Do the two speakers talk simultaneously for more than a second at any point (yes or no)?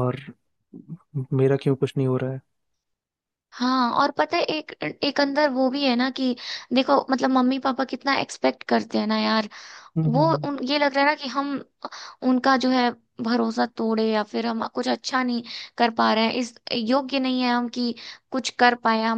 no